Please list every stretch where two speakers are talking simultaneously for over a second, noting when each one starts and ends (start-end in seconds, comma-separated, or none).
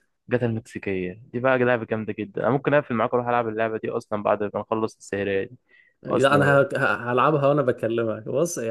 none